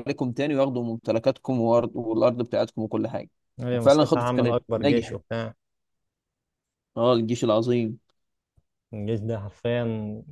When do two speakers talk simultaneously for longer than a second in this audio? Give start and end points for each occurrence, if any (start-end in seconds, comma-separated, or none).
3.7-5.2